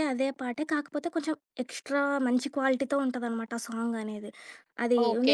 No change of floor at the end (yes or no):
no